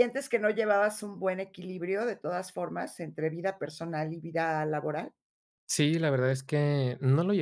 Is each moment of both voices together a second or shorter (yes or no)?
yes